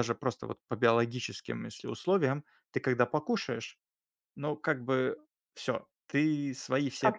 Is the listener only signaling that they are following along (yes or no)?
no